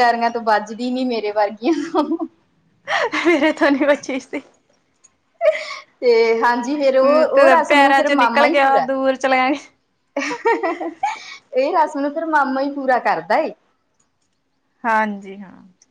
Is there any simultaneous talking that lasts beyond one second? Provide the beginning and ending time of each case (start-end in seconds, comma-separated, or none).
7.3-8.9